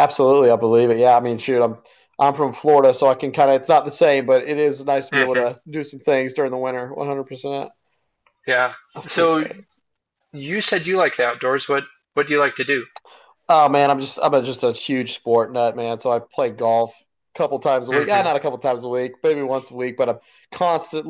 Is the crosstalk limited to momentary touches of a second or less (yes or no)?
yes